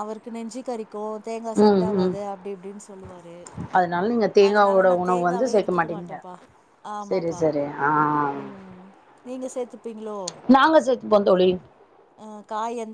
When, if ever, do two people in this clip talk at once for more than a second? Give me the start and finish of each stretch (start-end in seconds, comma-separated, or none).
4.5-6.1